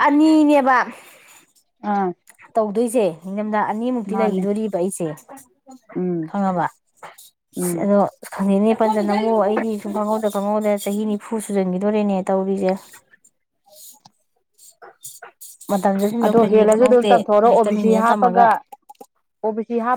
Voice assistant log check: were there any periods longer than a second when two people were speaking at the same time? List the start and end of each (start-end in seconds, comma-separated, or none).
16.2-18.4